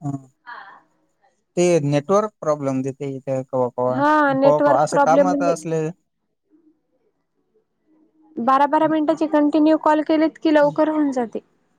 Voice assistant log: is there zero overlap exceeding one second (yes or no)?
no